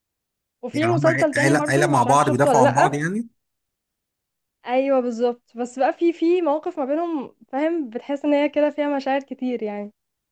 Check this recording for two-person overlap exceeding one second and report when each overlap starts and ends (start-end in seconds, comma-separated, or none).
0.7-3.0